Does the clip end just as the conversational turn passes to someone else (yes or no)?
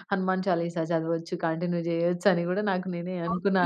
yes